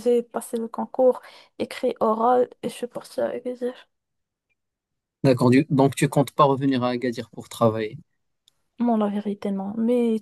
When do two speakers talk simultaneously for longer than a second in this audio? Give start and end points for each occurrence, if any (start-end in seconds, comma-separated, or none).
none